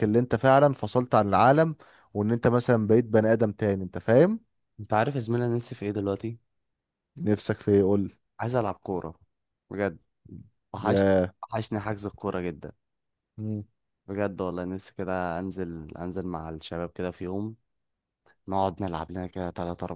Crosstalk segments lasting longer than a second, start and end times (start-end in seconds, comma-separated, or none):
none